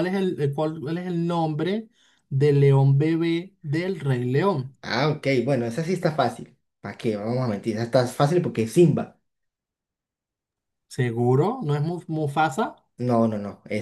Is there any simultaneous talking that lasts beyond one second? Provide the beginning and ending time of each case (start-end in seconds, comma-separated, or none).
none